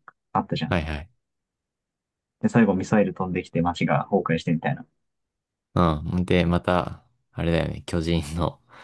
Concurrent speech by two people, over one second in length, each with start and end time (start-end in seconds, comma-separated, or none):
none